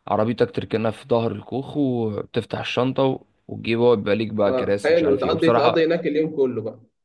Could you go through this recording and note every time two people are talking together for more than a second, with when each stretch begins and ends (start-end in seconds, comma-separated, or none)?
4.5-5.9